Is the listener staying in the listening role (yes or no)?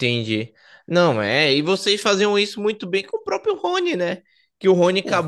yes